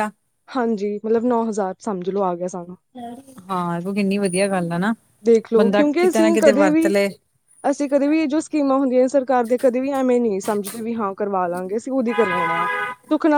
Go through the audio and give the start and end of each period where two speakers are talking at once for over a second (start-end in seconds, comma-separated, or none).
5.6-6.9